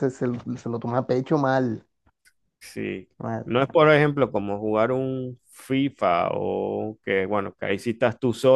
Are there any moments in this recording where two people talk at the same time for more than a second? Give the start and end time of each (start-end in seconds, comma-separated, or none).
none